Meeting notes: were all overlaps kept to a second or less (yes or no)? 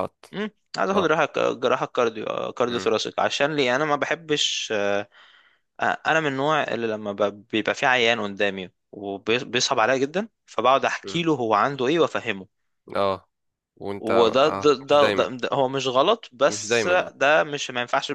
no